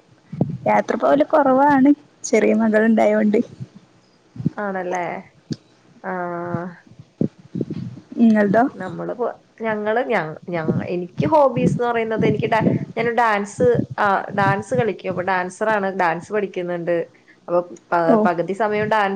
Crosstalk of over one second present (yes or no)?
no